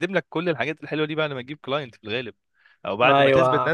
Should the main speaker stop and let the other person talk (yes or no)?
no